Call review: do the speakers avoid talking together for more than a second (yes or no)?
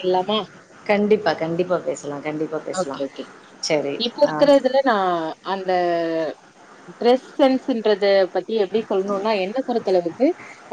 yes